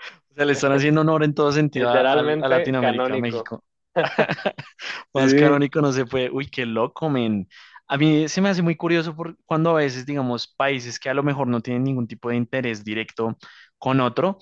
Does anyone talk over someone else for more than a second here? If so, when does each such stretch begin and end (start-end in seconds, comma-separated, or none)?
1.7-3.5